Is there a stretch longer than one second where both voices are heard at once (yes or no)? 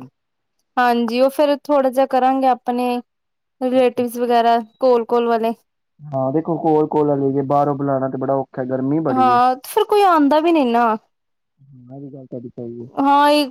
no